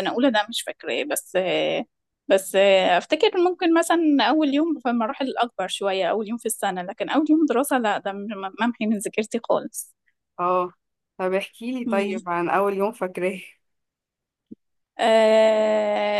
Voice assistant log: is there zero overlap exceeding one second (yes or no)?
yes